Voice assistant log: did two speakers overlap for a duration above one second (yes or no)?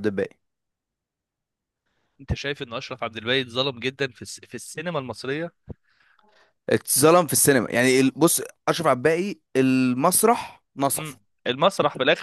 no